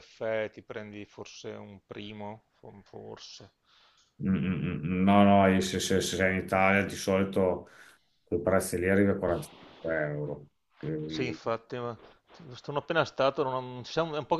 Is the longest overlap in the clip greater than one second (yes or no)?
no